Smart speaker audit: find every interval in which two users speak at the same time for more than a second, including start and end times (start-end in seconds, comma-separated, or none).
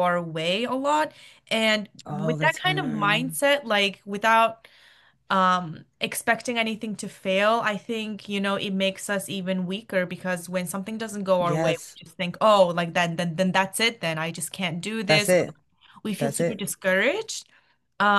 2.0-3.4